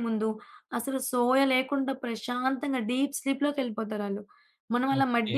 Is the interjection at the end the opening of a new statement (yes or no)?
yes